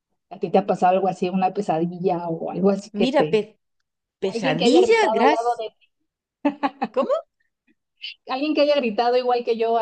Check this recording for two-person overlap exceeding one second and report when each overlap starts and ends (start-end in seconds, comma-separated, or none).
4.2-5.5